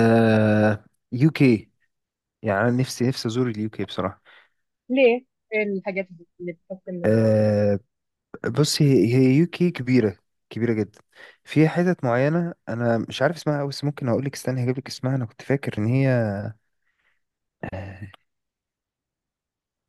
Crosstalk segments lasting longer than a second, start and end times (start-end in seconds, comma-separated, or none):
none